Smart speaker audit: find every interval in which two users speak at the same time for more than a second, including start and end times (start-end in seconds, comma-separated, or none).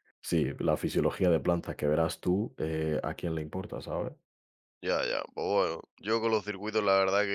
none